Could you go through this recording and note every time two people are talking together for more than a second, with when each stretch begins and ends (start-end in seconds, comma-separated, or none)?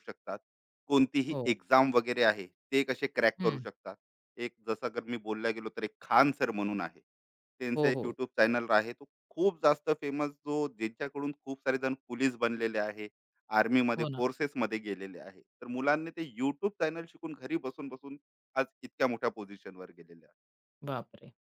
none